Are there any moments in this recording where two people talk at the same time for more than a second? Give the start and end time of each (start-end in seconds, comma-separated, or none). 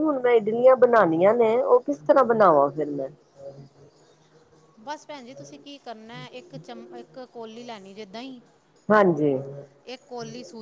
none